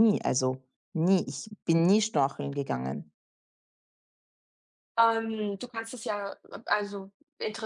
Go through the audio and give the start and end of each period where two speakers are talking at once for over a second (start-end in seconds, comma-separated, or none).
none